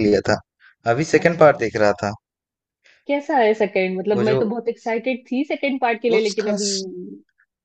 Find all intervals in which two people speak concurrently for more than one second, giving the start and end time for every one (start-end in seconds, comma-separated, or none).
none